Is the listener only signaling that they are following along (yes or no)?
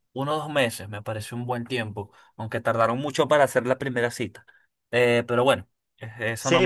no